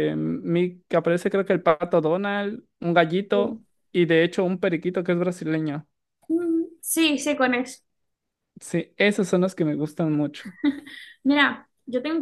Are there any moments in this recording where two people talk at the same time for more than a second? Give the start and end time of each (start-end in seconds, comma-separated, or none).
none